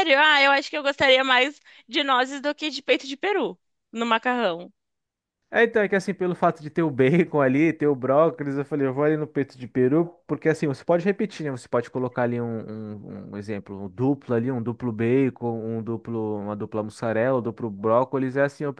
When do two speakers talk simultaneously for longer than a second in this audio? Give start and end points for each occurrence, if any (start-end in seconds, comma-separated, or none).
none